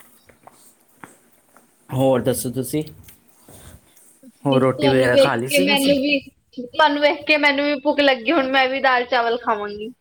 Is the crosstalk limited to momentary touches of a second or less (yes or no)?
no